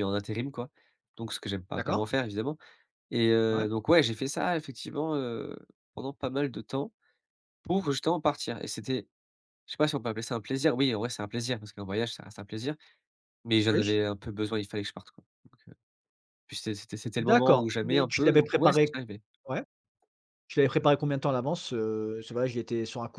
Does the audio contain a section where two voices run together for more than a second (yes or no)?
yes